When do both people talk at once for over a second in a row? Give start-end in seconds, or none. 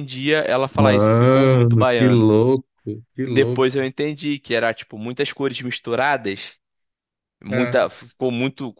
0.8-2.3